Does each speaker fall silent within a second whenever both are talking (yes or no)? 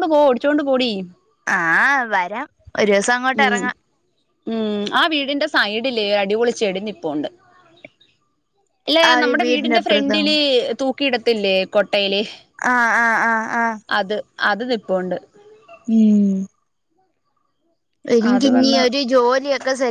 yes